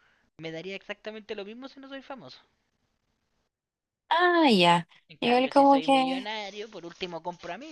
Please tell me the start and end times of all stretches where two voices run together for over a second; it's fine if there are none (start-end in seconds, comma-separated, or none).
5.1-6.3